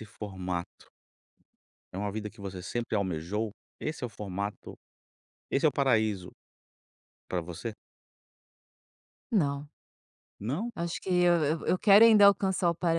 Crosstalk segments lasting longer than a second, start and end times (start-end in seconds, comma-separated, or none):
none